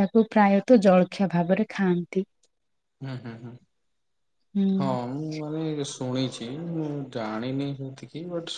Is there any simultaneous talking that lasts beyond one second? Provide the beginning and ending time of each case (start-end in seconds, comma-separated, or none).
none